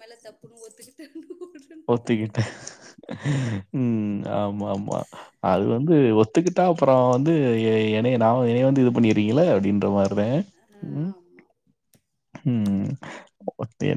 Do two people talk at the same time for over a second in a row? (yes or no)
no